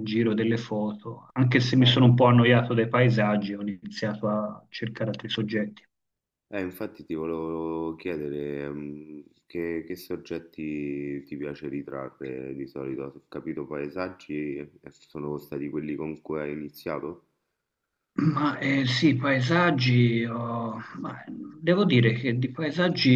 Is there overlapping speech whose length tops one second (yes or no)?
no